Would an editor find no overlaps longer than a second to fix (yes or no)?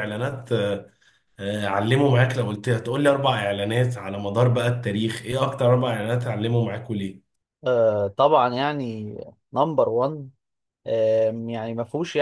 yes